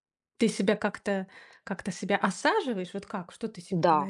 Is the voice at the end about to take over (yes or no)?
yes